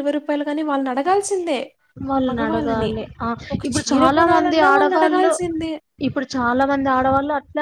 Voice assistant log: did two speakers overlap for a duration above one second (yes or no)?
yes